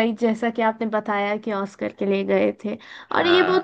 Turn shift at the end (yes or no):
no